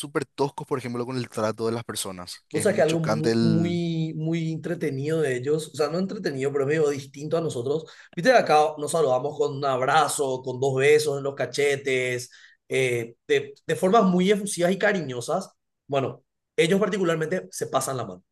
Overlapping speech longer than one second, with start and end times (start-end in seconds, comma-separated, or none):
2.5-3.8